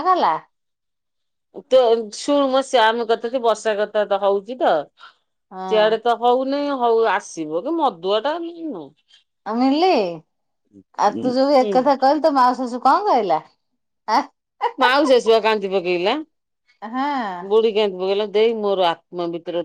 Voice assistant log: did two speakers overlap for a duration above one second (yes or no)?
no